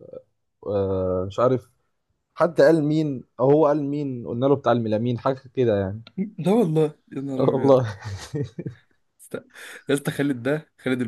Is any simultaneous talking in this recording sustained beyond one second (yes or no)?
no